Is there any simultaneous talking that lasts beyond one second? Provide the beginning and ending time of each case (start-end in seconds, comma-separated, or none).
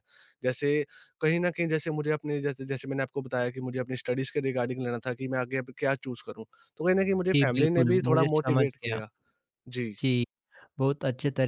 7.3-9.0